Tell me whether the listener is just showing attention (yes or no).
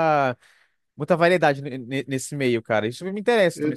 no